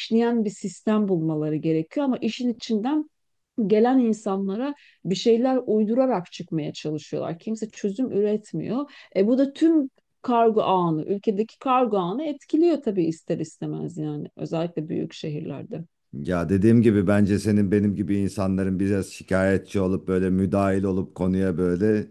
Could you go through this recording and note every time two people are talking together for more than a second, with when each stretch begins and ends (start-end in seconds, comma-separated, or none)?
none